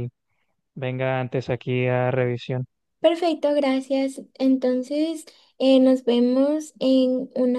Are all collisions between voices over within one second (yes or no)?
yes